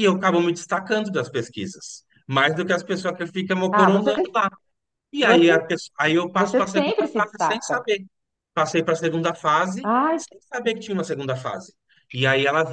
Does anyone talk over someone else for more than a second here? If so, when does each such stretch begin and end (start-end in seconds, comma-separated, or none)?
6.3-7.8